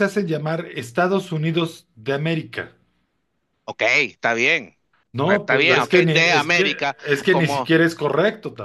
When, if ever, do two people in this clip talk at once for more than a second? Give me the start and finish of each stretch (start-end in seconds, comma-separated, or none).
5.2-7.7